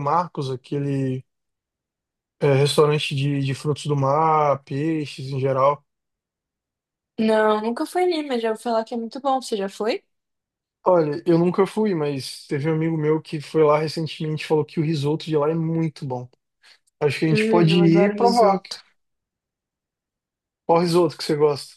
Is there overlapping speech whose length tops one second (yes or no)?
yes